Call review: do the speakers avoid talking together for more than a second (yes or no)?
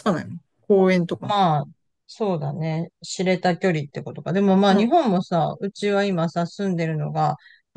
yes